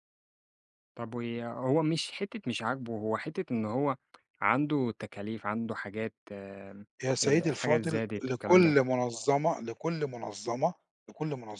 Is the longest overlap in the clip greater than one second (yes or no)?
yes